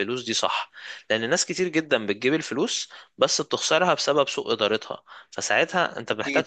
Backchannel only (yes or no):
no